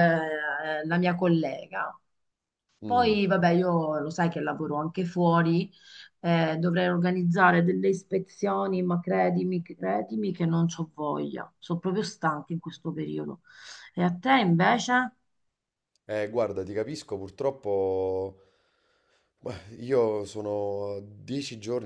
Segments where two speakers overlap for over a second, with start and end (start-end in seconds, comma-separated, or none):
none